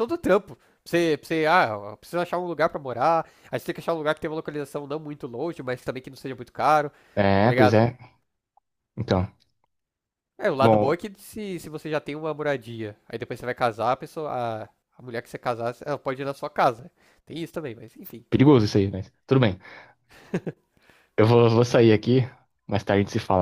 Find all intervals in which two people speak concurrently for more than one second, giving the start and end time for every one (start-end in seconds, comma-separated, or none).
none